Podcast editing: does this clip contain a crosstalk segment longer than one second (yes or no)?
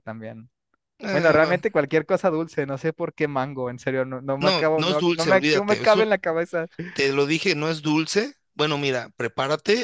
yes